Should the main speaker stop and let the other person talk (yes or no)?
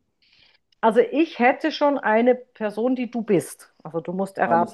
yes